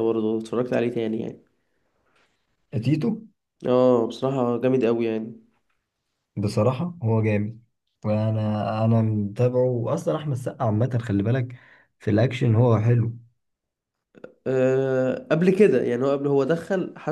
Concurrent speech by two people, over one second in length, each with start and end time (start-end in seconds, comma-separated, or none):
none